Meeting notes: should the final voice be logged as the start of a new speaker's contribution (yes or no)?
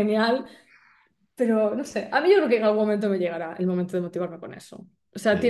yes